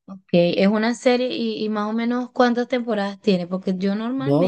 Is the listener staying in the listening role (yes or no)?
no